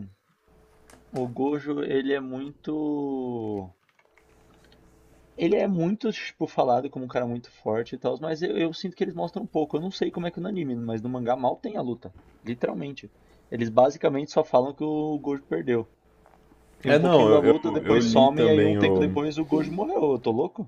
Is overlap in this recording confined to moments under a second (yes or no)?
no